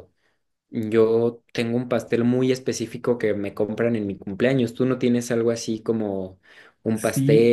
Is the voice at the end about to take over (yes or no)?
yes